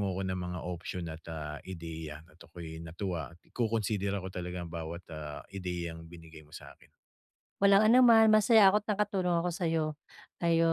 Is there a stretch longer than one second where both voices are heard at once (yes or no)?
no